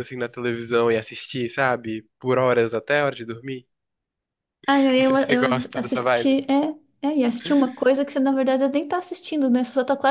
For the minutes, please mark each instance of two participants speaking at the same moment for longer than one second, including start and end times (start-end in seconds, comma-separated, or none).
5.0-6.4